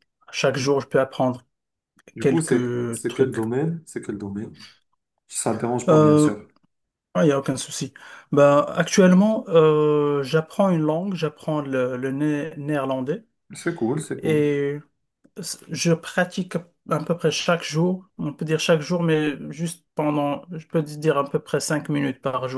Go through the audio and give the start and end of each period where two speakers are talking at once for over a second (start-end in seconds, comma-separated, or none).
2.2-3.4